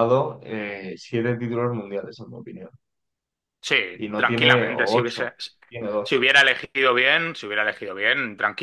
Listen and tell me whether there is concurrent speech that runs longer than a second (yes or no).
yes